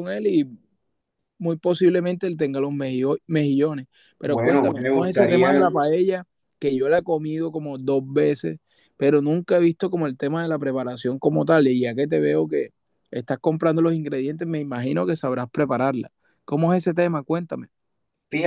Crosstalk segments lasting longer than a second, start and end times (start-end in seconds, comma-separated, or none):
4.2-5.7